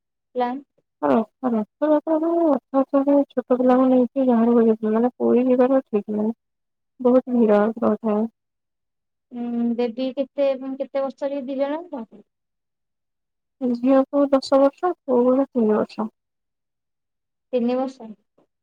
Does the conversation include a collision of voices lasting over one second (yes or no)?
no